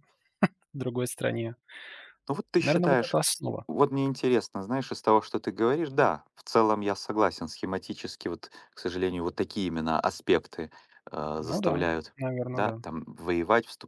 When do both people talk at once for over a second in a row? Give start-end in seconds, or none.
none